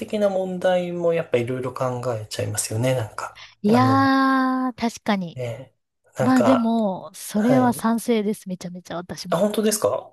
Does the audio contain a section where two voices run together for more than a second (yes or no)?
no